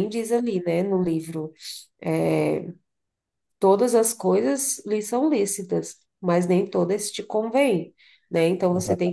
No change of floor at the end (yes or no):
yes